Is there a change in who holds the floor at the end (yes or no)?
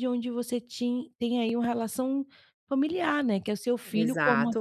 yes